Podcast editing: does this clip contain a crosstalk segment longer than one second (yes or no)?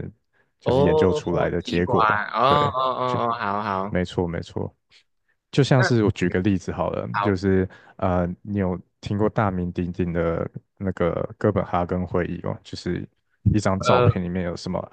yes